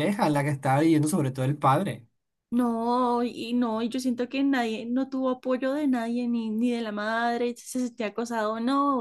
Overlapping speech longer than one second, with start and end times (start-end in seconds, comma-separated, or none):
none